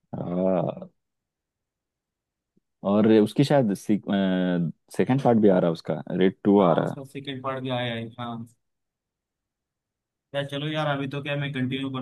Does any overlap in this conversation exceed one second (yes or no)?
no